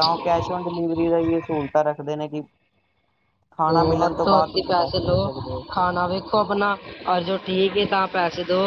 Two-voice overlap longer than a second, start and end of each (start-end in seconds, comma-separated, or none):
none